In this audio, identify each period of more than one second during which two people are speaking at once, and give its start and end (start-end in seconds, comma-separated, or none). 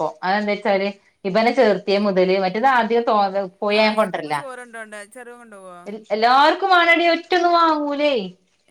none